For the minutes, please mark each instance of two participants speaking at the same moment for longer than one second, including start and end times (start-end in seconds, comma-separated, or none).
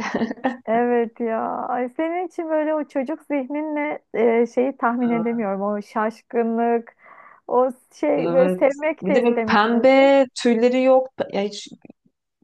8.2-10.1